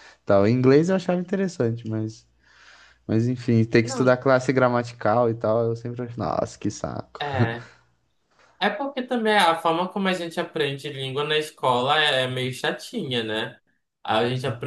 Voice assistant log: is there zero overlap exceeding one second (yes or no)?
yes